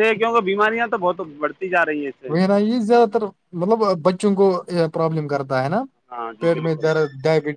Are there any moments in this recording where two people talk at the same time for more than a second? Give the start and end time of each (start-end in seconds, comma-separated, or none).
none